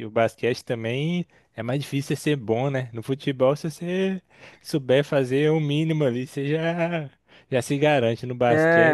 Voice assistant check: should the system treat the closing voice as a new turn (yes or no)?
yes